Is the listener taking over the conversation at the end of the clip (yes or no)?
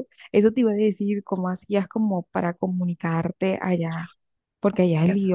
yes